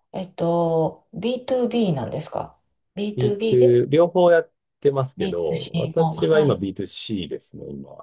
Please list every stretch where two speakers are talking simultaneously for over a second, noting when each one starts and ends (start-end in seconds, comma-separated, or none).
5.2-6.6